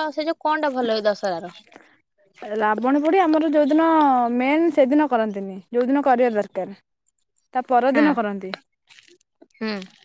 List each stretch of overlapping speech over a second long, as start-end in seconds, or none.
none